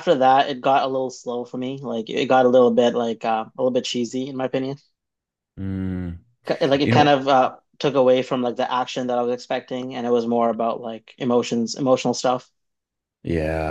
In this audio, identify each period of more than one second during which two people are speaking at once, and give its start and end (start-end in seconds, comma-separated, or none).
none